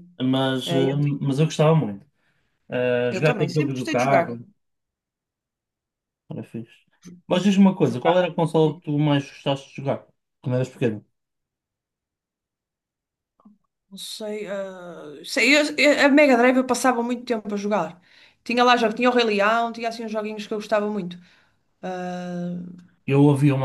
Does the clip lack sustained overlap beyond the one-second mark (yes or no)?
no